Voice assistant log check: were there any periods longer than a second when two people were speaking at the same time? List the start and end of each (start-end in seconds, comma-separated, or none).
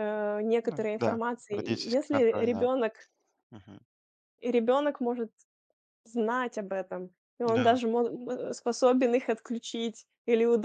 0.6-2.7